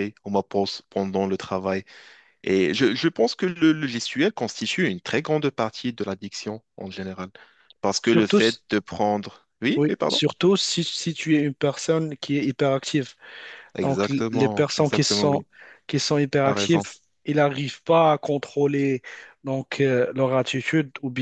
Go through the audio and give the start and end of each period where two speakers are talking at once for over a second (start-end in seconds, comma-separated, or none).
13.8-15.4